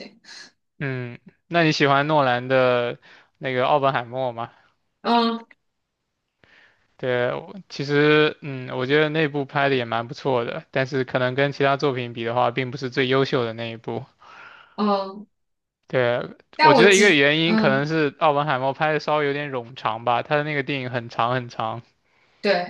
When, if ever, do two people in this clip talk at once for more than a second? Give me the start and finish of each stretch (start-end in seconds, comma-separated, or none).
16.6-17.9